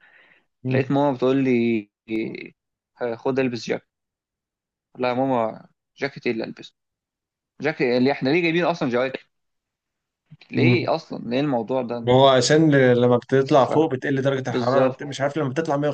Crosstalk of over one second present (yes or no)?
no